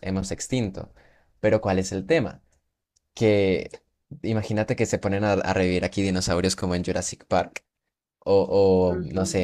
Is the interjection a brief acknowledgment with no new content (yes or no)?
yes